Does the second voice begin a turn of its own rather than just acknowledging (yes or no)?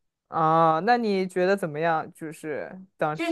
yes